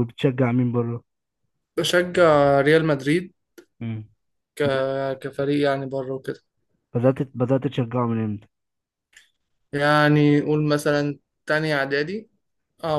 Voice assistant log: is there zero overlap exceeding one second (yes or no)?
yes